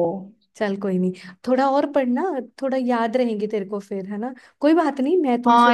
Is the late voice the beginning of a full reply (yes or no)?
yes